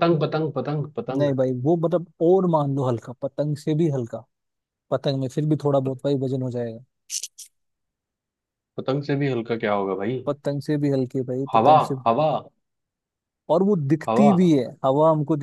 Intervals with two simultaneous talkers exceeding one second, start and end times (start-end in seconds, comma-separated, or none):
none